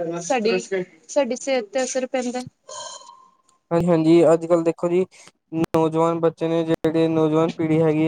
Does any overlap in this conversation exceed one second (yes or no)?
no